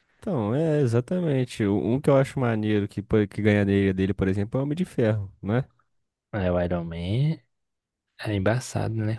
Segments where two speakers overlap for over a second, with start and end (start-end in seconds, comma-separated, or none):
none